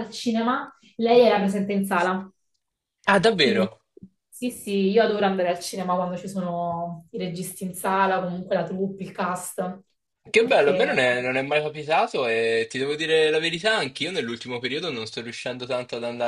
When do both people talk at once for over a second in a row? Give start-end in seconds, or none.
none